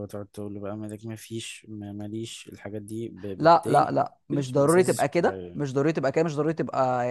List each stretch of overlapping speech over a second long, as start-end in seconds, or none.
3.4-5.7